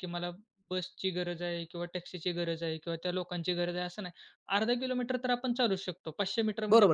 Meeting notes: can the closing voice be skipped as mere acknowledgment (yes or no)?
no